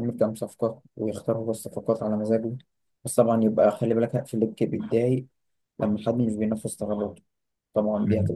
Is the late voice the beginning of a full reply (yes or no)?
no